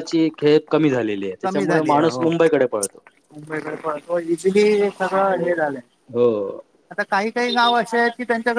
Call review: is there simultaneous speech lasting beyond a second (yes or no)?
no